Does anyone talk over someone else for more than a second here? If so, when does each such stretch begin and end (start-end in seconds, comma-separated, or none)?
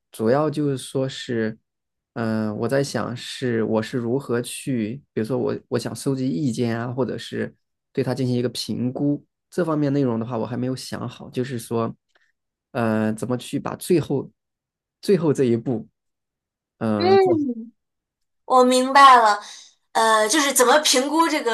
none